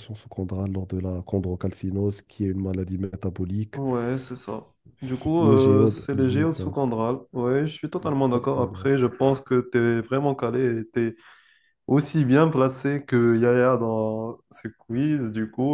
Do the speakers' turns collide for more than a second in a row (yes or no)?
yes